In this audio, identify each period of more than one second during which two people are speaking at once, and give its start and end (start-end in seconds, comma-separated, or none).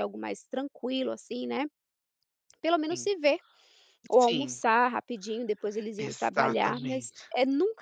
6.0-7.3